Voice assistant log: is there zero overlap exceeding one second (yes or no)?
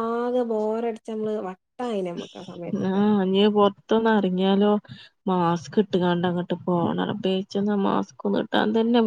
yes